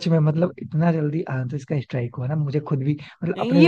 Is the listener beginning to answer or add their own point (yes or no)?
yes